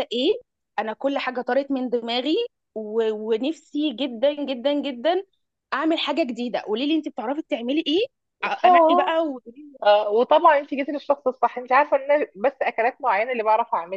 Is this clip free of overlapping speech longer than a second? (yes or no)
yes